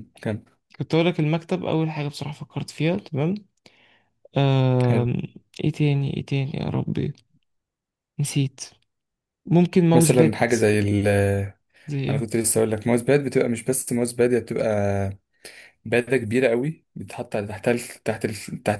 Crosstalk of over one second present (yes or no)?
no